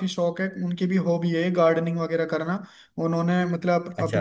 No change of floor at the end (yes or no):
yes